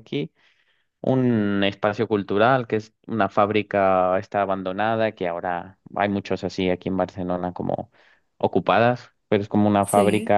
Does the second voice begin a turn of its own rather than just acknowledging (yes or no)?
no